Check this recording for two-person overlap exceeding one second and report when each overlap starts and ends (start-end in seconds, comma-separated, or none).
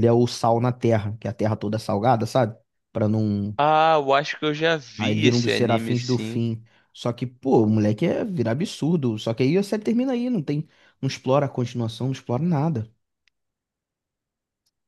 5.0-6.4